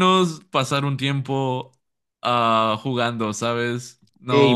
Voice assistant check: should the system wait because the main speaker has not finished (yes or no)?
no